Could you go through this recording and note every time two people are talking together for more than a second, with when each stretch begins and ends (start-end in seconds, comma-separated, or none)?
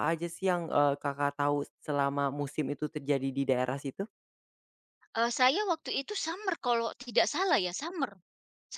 none